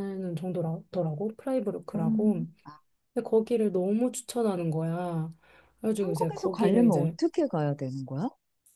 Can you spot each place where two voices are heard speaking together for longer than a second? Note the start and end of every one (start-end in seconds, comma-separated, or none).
6.0-7.2